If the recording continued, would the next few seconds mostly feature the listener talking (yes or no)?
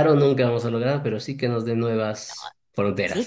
yes